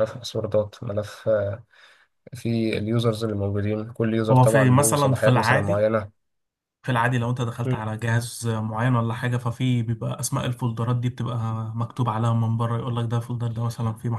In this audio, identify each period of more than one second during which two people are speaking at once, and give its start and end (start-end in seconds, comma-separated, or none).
4.3-5.8